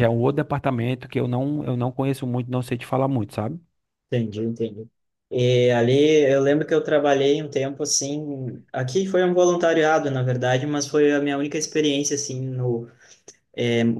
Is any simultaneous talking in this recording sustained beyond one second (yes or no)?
no